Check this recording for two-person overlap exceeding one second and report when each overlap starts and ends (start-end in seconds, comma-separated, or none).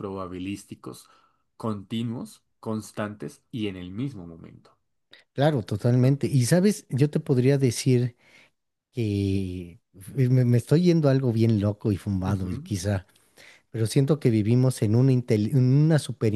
none